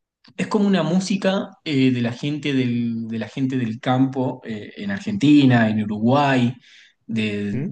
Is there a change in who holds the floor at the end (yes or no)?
no